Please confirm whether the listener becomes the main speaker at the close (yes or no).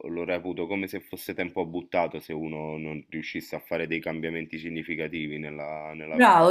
yes